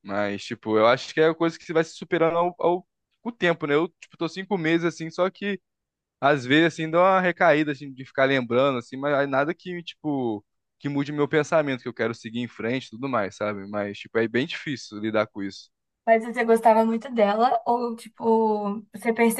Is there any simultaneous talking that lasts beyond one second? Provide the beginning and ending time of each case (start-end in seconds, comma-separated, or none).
none